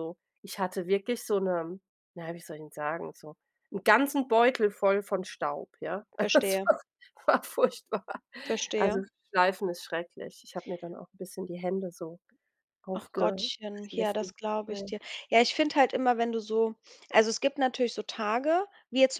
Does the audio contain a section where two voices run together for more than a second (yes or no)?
yes